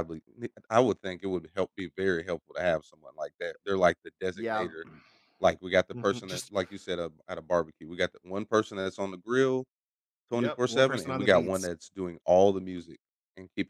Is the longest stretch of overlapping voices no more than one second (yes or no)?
no